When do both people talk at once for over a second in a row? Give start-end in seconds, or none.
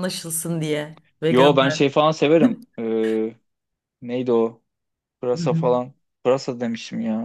none